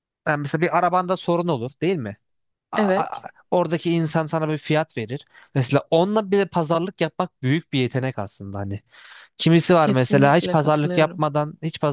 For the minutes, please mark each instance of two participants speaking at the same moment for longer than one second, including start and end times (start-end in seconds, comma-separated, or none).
9.8-11.2